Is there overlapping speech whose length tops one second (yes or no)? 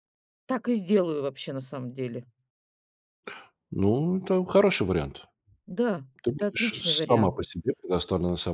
yes